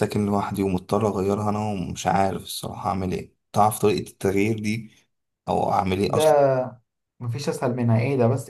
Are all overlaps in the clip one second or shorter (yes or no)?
yes